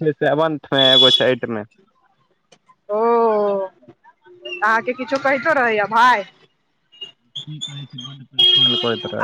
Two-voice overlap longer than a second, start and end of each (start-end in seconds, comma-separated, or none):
none